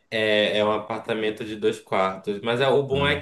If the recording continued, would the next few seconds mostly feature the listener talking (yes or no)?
no